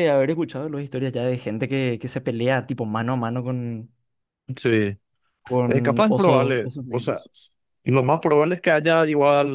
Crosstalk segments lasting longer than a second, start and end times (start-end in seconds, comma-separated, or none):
5.7-7.2